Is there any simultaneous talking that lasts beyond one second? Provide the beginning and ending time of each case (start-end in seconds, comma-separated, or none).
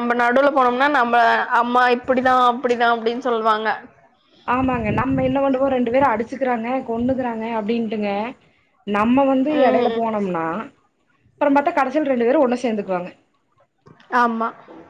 none